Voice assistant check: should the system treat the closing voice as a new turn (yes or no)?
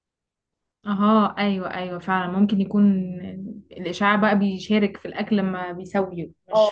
yes